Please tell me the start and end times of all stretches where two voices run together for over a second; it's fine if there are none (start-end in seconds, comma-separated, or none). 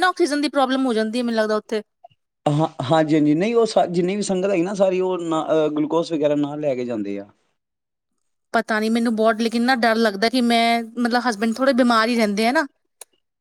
none